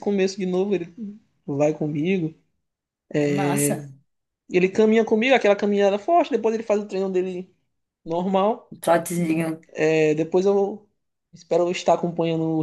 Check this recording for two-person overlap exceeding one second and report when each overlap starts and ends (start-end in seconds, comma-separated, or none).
none